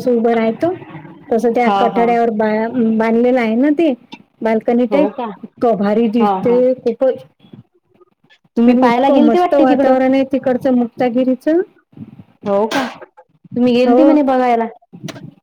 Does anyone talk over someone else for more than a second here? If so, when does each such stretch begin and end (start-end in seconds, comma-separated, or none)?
8.7-9.9